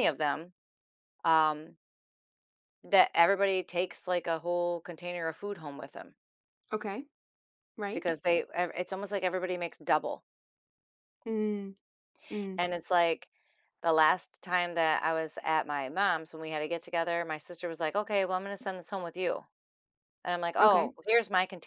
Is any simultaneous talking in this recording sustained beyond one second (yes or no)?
no